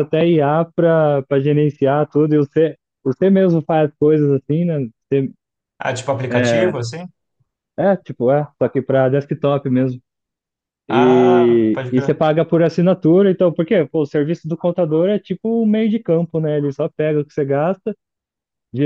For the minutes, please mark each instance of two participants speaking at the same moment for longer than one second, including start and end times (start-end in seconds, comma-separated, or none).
10.9-12.2